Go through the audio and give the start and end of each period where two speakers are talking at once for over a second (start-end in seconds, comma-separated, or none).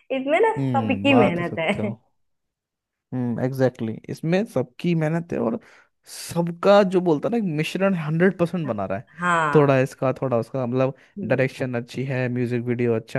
0.6-1.9